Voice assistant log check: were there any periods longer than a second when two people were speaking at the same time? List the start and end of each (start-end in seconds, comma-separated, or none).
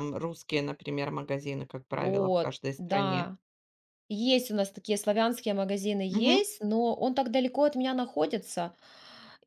1.9-3.3